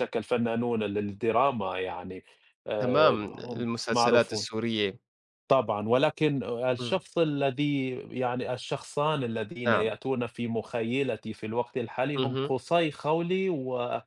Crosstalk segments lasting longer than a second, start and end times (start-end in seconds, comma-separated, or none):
2.8-4.5